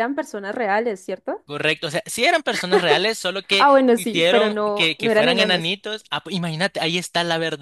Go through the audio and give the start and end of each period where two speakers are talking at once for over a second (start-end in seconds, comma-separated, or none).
3.6-5.7